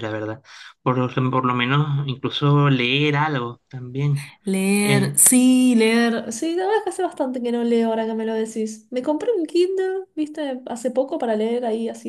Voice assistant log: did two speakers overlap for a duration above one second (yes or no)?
no